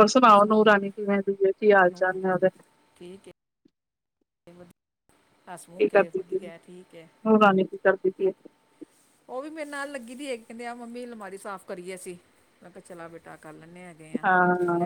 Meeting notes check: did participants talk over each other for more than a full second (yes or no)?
no